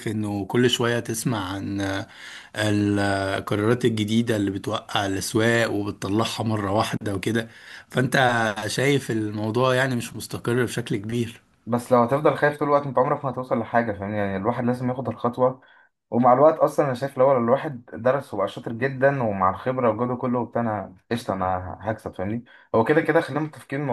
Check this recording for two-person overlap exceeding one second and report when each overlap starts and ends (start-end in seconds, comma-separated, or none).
none